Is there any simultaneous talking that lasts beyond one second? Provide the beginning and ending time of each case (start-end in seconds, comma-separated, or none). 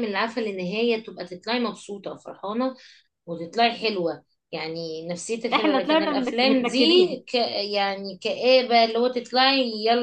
5.5-6.8